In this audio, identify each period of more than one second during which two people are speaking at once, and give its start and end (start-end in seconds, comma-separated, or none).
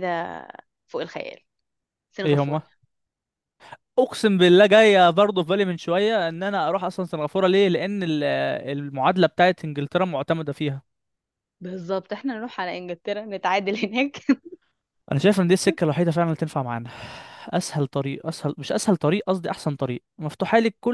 none